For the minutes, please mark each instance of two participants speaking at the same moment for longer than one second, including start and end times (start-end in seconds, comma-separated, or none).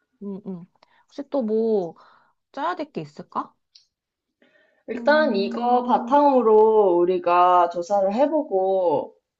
4.9-6.2